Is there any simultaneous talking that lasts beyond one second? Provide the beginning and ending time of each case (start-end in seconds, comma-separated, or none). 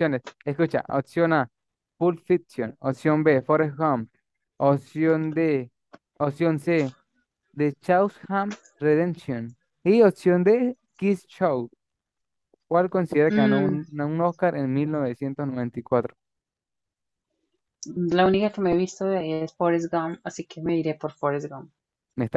none